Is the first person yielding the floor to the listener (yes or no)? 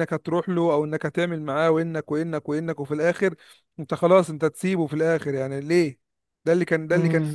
no